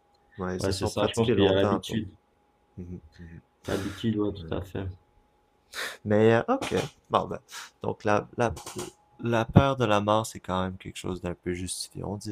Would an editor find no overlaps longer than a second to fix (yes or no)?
no